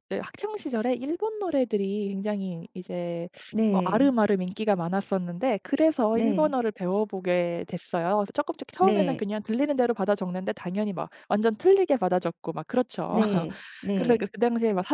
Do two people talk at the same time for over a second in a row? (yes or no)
no